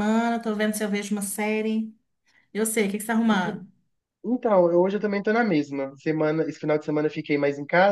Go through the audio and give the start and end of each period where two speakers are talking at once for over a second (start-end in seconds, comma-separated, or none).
none